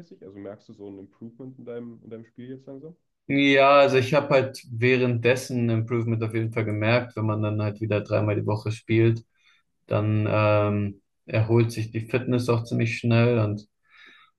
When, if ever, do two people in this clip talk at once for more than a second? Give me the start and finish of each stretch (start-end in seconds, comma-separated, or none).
none